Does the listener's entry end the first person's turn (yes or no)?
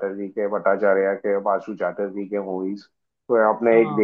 no